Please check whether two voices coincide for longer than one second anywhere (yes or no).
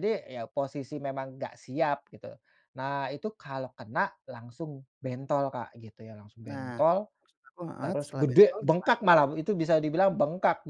yes